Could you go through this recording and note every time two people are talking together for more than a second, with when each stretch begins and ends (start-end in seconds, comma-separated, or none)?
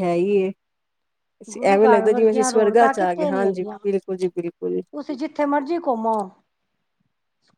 1.7-4.8